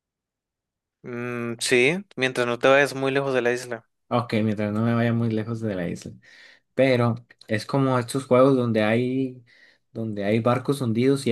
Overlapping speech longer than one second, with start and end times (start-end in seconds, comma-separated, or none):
none